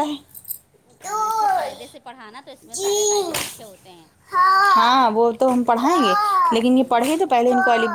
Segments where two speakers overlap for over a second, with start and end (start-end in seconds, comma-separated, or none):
none